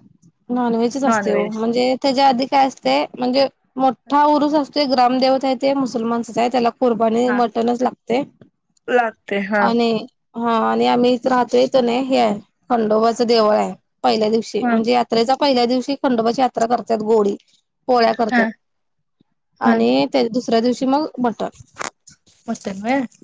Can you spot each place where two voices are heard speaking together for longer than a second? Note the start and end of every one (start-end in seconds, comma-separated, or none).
none